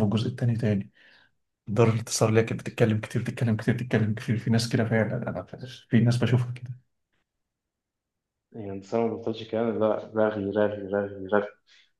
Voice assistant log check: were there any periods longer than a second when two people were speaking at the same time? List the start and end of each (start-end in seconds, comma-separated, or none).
none